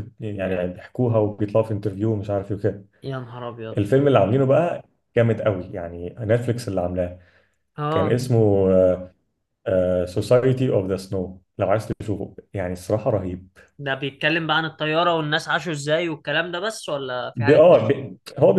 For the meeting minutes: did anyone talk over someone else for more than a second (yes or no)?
no